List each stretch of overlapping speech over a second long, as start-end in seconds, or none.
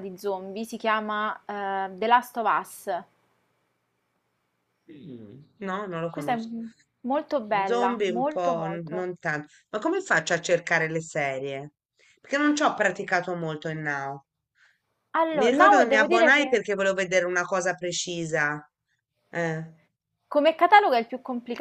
7.6-9.1, 15.3-16.6